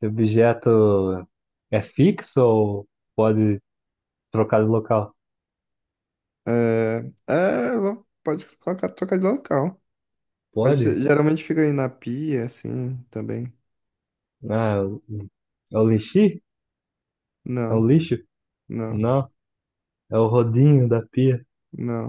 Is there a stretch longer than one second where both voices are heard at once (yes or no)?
no